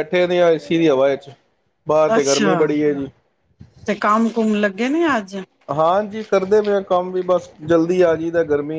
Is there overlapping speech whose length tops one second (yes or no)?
no